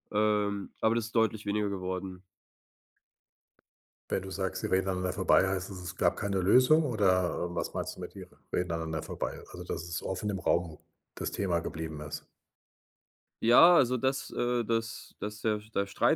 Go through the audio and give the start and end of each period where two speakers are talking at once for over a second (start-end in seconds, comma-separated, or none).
none